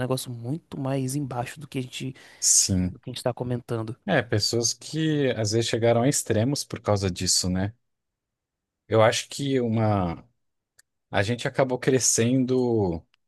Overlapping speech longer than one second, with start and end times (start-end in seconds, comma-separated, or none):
none